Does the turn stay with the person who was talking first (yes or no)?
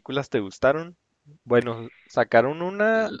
yes